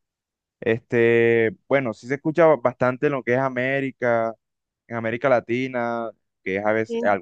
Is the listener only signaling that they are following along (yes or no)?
yes